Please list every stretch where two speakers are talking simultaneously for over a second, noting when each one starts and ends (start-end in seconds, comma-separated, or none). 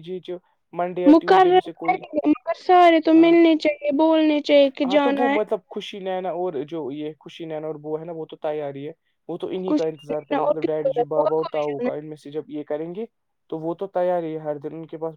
9.7-12.0